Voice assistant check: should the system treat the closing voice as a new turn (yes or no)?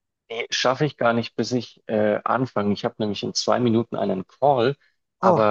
no